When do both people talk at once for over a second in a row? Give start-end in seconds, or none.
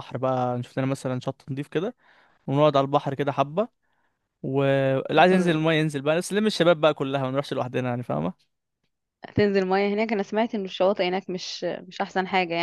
none